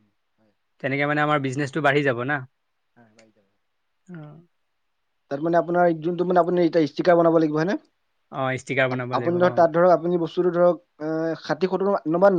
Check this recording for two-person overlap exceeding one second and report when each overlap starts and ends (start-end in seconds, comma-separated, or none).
none